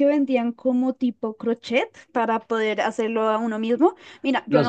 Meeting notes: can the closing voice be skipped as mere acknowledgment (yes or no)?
yes